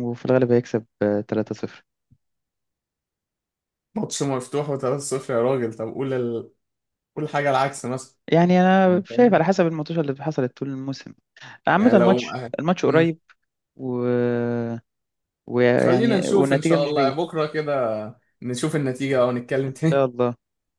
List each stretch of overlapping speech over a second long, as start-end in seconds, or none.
15.8-17.2